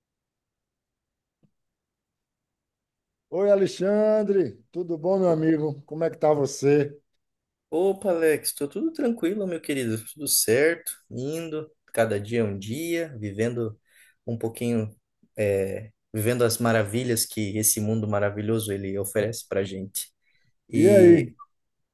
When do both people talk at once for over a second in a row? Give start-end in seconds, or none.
none